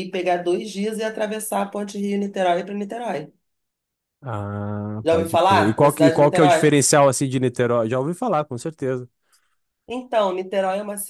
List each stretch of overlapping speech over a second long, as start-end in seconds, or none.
5.0-6.7